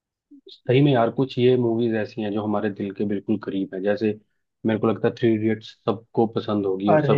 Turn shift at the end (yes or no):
yes